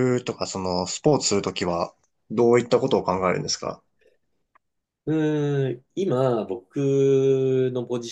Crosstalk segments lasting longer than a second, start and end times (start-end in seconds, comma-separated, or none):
none